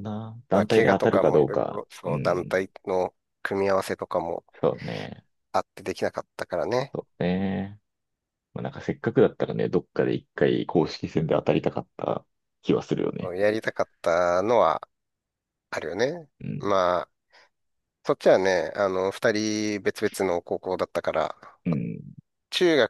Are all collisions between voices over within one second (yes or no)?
no